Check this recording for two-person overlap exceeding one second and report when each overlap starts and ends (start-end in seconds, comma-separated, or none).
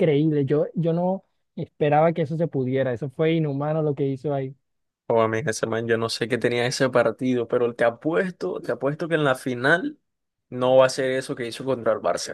none